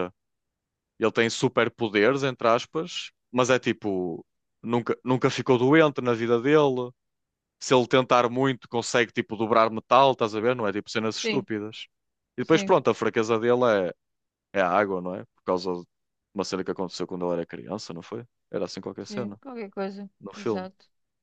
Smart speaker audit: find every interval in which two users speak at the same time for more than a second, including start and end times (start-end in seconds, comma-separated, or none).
none